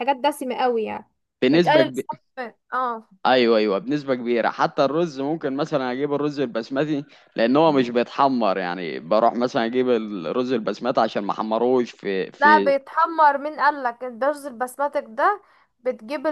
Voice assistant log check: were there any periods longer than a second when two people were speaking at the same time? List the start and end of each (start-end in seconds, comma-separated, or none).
none